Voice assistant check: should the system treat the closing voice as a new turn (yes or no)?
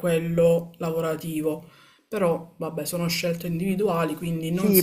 yes